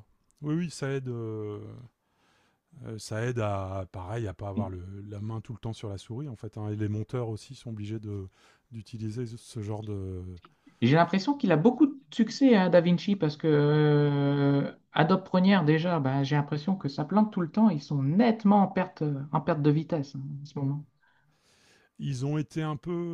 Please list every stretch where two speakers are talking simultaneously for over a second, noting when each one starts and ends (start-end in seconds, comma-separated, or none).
none